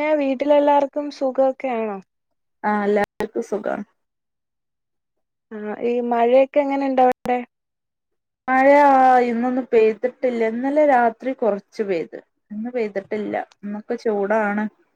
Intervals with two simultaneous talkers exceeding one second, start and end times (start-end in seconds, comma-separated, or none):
none